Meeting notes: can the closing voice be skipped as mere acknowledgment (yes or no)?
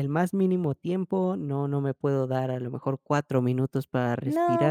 no